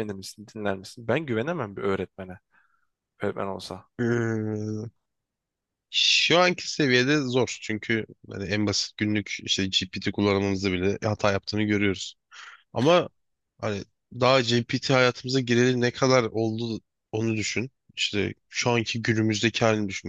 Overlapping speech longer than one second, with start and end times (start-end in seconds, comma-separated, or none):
none